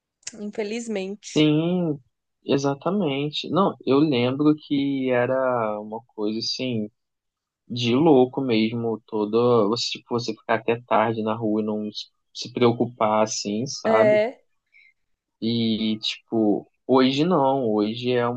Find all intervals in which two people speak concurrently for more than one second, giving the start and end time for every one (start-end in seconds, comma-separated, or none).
none